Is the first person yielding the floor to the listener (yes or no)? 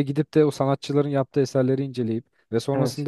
no